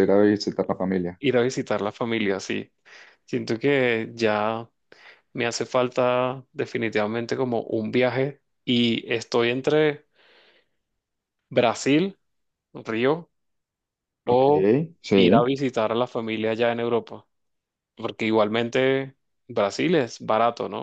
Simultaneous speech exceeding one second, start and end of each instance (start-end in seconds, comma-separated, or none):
none